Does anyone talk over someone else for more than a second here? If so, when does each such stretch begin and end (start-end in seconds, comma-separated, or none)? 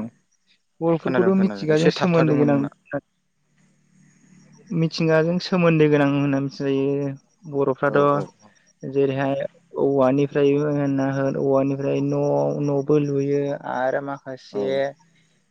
1.0-2.7